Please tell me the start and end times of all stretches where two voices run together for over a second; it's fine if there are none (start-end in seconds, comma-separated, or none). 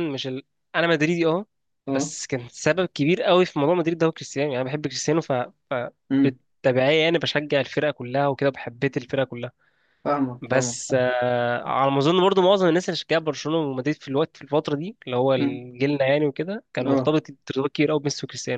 none